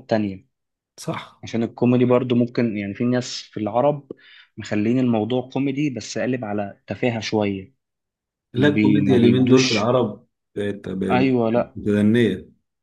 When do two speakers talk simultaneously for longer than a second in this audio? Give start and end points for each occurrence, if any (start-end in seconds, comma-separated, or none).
8.5-9.9